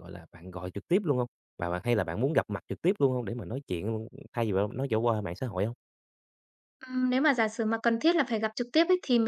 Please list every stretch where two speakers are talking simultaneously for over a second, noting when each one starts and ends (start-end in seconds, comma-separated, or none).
none